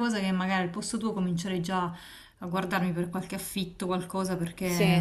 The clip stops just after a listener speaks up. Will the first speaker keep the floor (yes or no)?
yes